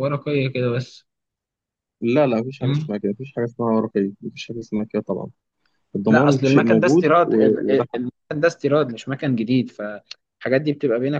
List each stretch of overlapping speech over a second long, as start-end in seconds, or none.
6.1-8.0